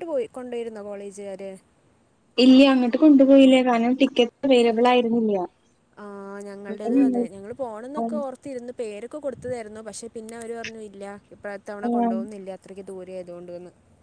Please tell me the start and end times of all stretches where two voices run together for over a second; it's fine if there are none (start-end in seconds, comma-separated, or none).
none